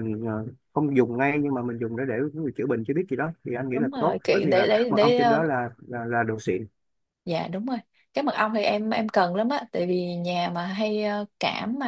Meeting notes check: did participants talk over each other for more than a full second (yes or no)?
yes